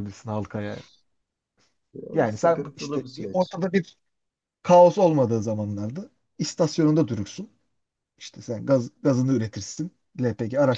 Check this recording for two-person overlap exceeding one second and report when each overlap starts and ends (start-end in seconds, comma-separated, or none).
2.1-3.6